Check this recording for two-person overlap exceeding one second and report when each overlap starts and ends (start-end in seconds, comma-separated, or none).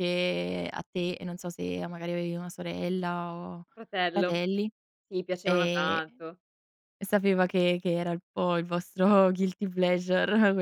none